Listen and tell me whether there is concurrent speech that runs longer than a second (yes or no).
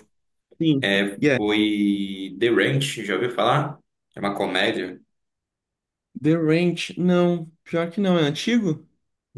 no